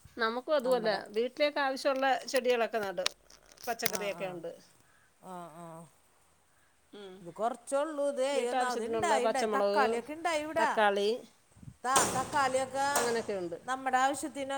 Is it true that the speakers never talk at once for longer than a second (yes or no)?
no